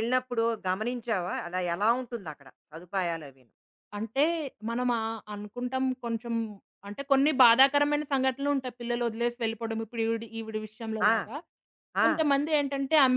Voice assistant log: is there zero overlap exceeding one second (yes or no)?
yes